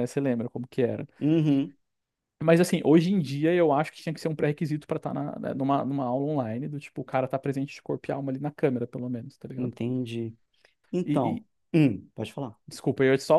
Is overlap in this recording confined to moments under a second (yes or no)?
yes